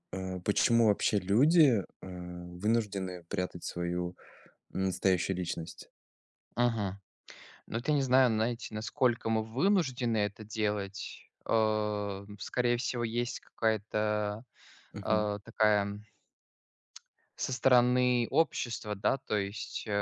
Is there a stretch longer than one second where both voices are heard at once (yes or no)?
no